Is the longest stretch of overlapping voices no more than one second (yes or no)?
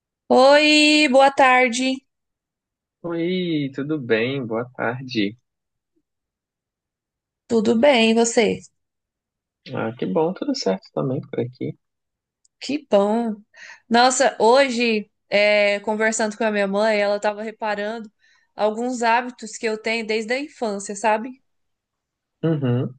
yes